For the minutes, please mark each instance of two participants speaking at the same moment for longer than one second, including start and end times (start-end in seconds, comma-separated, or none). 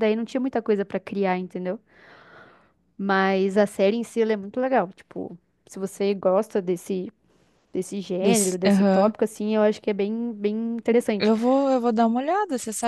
none